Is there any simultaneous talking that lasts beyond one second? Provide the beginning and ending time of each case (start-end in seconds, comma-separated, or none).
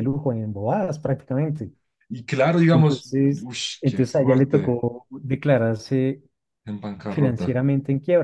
2.7-4.8